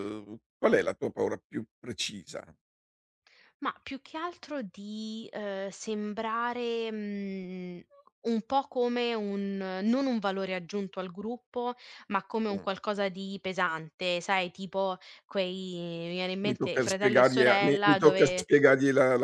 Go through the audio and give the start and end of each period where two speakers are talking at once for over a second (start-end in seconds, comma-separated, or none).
16.4-18.5